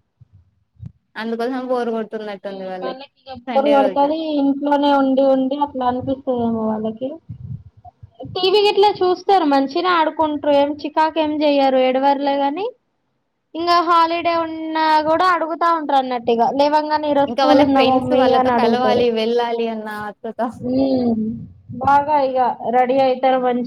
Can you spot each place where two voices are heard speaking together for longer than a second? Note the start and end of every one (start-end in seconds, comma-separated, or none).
17.3-19.0